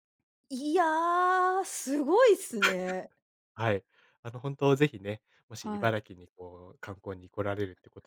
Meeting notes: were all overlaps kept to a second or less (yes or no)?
yes